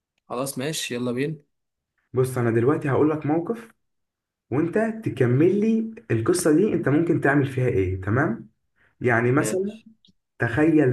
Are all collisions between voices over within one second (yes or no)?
yes